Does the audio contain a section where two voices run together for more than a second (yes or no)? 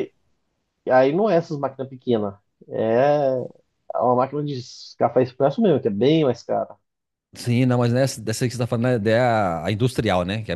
no